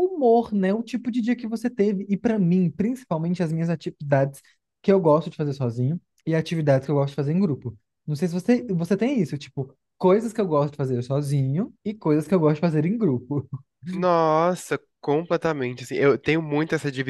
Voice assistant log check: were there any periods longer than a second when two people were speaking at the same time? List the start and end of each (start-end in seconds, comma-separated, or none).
none